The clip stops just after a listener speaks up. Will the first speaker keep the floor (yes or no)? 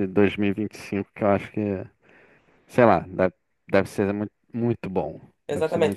no